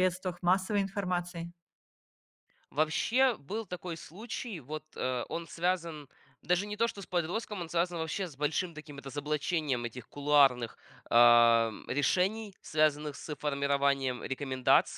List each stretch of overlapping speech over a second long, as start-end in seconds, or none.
none